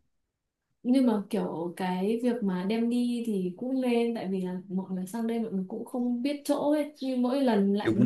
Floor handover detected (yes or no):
no